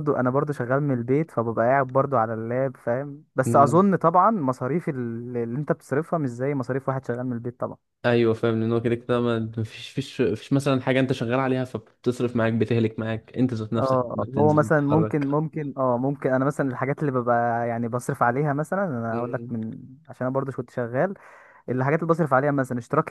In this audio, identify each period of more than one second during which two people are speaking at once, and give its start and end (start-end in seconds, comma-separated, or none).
13.8-15.3